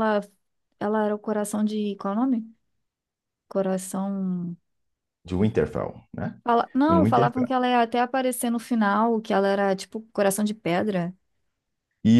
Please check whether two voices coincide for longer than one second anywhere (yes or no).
no